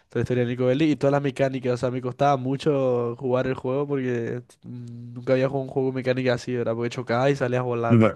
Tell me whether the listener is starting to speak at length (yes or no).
yes